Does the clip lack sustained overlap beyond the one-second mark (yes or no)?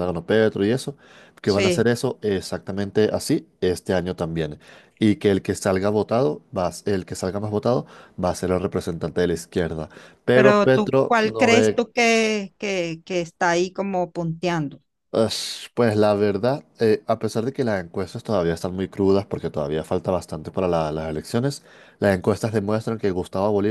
no